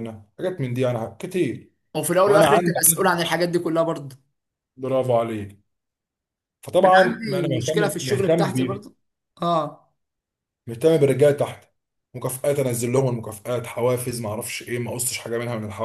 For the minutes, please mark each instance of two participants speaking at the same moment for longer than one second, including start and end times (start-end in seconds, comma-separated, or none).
6.9-8.8